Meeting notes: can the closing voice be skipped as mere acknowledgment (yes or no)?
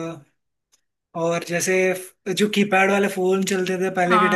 yes